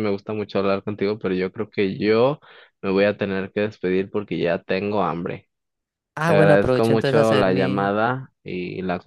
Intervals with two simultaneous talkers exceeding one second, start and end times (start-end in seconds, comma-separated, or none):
6.2-7.9